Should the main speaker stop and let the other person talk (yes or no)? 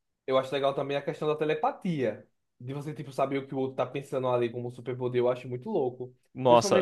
no